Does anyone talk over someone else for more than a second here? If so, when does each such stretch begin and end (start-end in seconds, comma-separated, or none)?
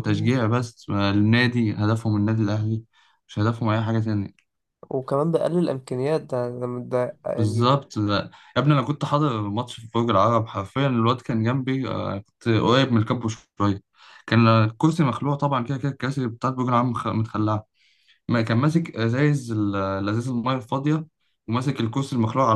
none